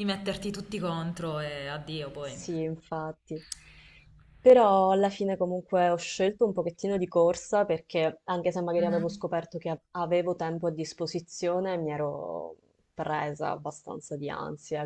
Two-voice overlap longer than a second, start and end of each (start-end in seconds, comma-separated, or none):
none